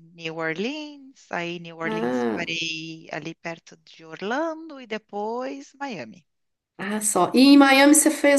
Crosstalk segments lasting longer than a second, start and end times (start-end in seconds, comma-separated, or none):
none